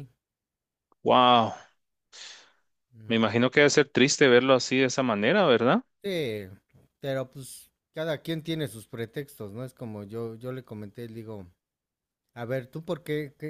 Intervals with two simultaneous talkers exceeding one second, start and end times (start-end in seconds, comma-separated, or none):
none